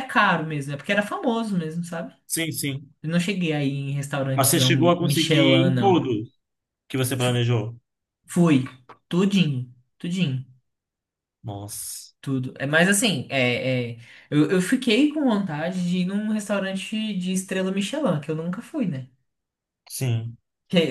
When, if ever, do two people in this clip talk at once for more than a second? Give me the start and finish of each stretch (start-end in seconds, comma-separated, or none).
4.3-6.1